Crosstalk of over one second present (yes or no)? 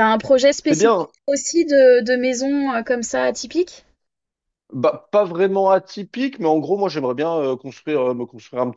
no